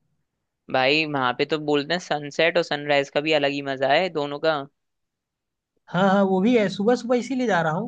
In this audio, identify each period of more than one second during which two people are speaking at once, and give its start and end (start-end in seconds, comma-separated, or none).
none